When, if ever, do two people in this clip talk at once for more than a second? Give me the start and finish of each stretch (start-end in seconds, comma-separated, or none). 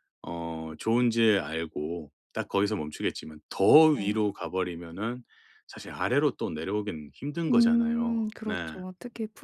7.5-8.8